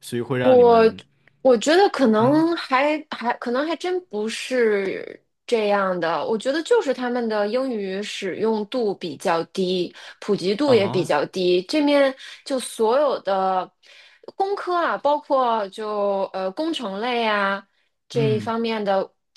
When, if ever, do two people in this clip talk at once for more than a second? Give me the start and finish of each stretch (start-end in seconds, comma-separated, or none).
none